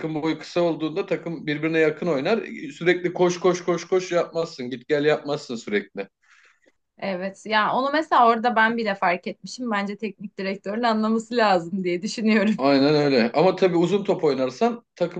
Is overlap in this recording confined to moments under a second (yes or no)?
yes